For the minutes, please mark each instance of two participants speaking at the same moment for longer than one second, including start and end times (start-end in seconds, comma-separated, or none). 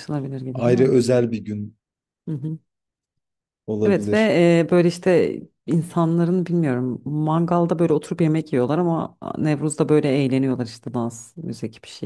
none